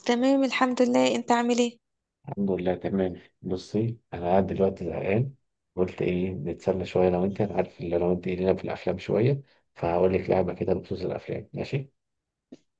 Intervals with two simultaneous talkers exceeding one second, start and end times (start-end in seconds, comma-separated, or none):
none